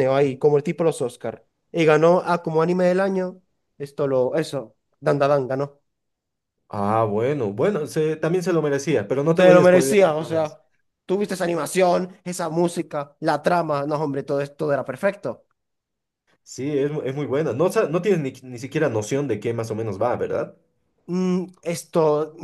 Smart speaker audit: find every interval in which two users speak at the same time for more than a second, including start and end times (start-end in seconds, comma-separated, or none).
9.4-10.6